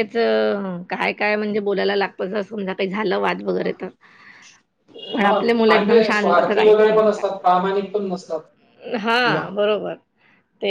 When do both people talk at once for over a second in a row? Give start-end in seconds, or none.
5.2-7.2